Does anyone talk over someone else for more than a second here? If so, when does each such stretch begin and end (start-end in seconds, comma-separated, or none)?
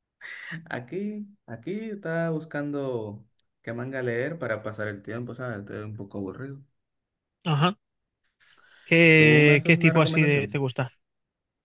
9.1-10.6